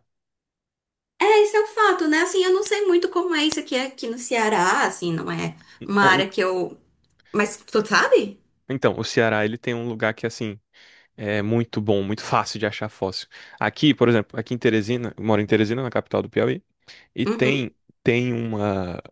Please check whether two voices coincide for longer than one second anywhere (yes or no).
no